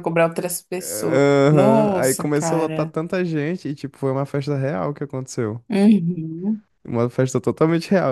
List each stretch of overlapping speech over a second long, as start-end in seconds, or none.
0.8-2.9